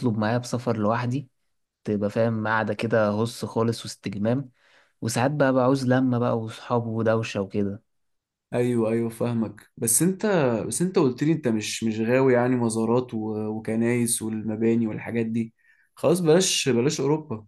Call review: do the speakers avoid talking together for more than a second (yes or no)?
yes